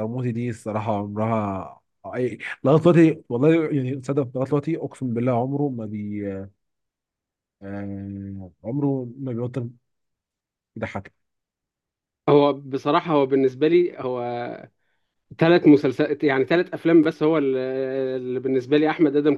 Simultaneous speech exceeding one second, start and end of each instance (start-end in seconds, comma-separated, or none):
none